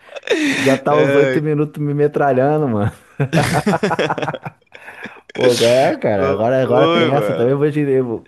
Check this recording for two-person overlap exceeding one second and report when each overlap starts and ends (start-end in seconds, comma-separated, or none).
6.1-7.6